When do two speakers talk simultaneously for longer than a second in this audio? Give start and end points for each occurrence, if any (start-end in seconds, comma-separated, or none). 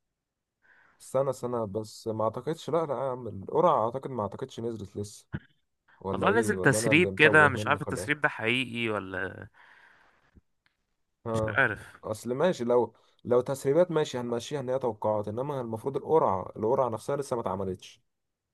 6.1-8.1